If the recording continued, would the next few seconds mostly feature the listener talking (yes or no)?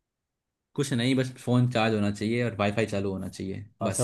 yes